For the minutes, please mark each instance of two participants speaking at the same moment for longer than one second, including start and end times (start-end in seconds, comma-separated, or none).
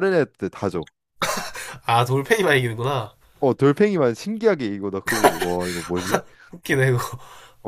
none